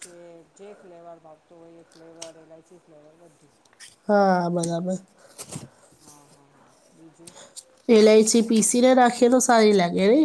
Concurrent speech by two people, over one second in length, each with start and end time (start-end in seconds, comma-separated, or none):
none